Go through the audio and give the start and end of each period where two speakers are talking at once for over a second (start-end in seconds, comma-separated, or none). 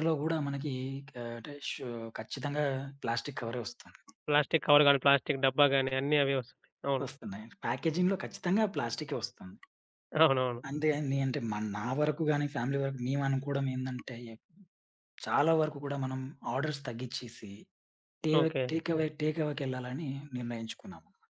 none